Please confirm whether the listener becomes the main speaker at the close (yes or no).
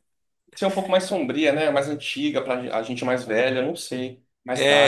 yes